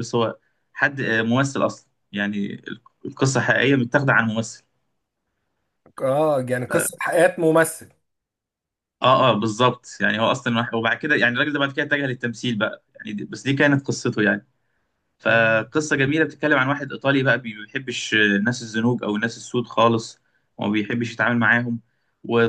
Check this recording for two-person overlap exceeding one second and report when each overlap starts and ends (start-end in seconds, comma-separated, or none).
none